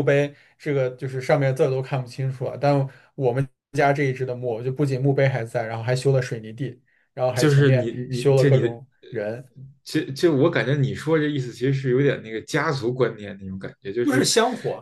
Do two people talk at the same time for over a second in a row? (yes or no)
yes